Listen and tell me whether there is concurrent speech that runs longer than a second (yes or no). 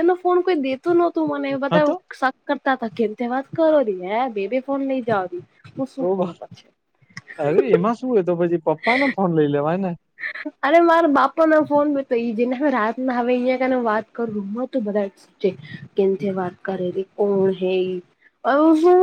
no